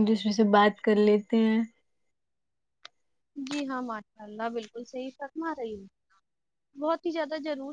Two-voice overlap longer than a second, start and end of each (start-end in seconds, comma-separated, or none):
none